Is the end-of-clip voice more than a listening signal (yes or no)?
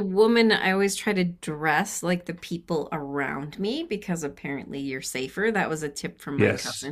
yes